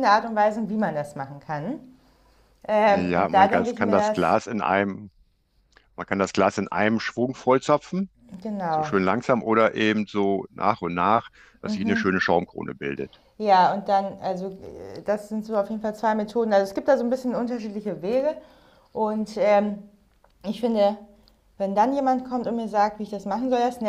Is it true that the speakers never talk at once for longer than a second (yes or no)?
no